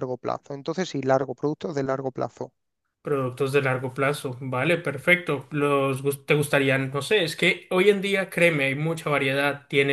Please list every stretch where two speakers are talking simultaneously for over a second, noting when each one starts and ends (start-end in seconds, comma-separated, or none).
none